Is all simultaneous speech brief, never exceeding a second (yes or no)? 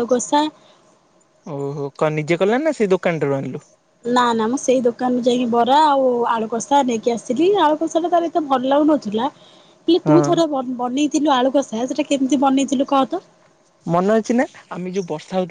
yes